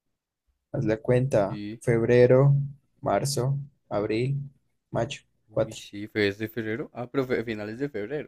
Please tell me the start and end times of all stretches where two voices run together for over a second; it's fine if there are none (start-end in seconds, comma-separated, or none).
none